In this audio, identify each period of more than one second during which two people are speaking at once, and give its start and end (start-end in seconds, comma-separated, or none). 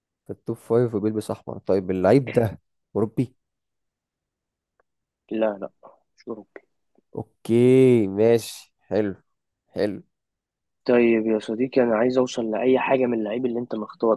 none